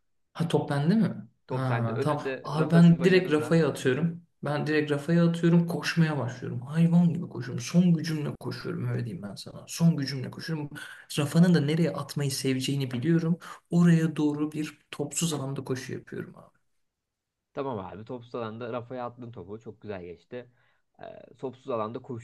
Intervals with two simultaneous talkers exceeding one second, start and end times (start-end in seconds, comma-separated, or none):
1.5-3.6